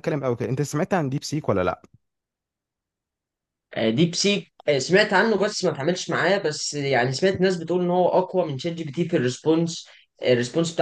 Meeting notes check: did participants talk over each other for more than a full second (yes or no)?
no